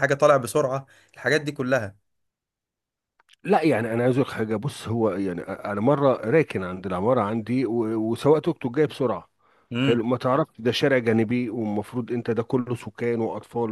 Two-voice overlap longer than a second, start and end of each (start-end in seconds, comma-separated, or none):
none